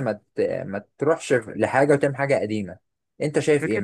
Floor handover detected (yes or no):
yes